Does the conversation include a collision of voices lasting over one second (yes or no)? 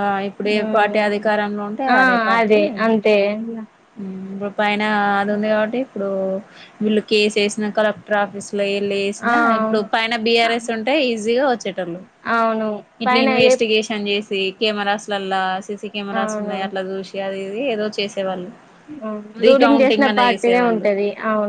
yes